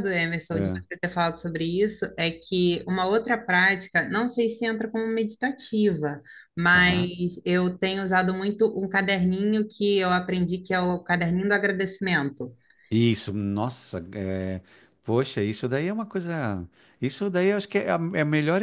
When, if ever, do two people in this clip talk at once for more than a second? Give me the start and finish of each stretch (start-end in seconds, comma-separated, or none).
none